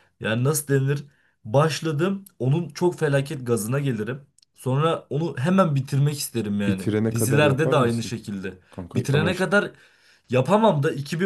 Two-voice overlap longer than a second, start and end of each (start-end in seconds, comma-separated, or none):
6.7-8.2